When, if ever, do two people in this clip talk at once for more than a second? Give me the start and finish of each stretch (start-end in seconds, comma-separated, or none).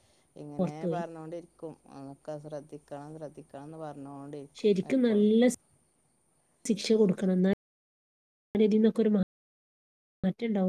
none